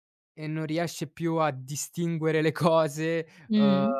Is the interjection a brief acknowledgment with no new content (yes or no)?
yes